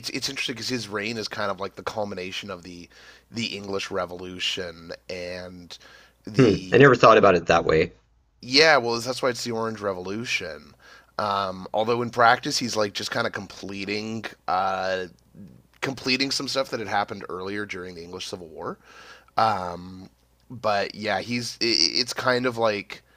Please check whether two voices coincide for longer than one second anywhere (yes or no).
no